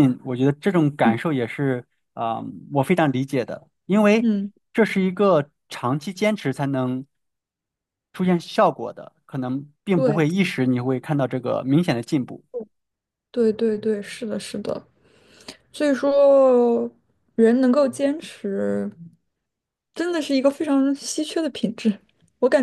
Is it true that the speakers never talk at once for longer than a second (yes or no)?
yes